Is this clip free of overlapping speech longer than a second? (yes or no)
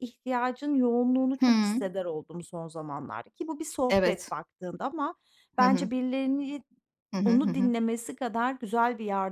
yes